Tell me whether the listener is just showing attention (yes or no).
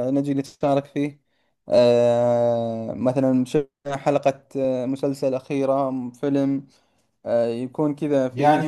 no